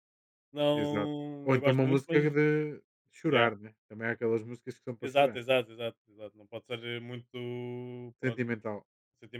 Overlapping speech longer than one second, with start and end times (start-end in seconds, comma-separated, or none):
0.7-2.3